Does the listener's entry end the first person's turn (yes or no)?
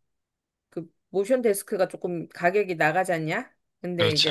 no